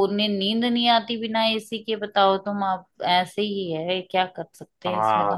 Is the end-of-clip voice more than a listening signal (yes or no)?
yes